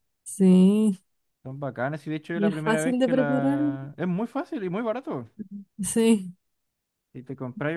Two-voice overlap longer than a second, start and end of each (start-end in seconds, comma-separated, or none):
2.3-3.6